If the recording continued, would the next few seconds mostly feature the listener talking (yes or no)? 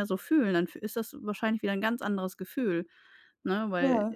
no